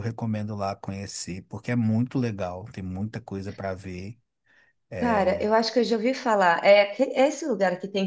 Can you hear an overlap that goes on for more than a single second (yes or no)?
no